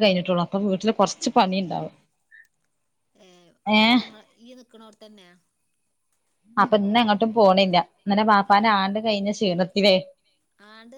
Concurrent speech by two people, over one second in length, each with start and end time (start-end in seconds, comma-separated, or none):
none